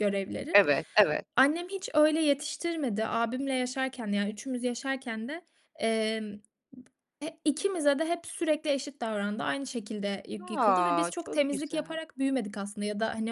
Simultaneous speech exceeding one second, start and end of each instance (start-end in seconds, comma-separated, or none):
10.4-12.0